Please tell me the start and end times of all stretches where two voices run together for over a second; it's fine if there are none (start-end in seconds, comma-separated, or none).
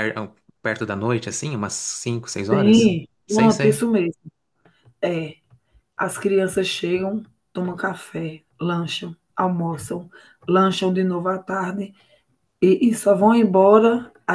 2.5-3.9